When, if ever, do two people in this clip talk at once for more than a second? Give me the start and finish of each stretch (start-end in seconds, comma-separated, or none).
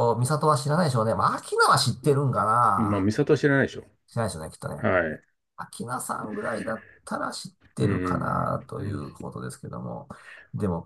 7.8-9.1